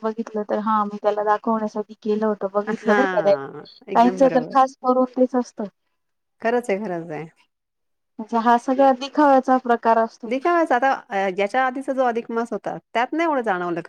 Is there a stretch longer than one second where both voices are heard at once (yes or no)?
yes